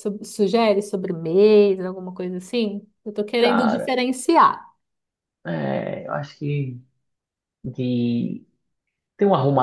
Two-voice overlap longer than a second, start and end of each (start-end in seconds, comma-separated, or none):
none